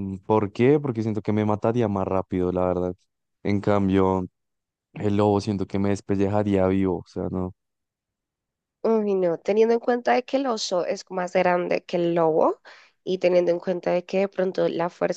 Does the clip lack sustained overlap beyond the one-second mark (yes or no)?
yes